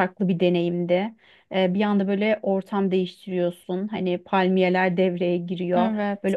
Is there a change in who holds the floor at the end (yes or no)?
no